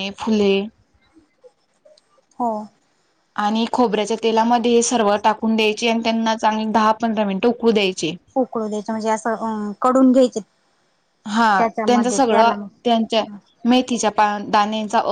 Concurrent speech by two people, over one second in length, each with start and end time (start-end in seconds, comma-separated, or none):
11.6-13.2